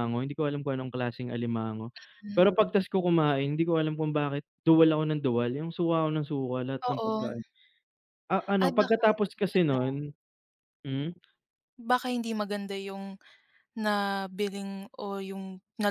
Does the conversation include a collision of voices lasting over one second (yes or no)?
yes